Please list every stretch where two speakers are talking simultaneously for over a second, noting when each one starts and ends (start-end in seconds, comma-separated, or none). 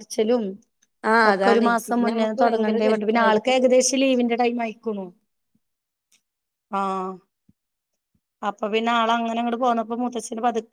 1.3-3.6